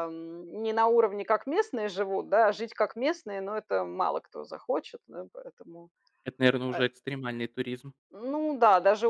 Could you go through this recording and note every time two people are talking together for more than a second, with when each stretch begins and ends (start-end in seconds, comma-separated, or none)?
none